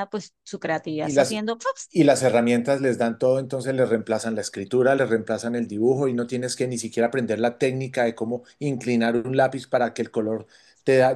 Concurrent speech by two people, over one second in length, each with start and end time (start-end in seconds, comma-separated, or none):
none